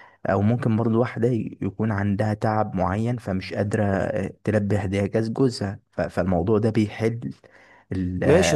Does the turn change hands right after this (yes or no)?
yes